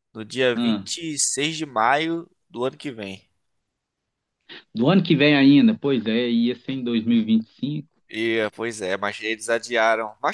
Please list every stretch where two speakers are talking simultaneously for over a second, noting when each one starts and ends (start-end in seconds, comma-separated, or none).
none